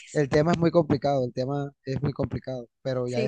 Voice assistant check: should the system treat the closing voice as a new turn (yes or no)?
no